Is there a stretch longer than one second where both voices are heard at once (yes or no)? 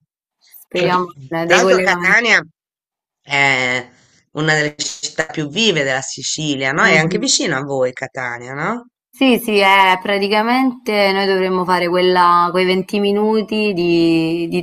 yes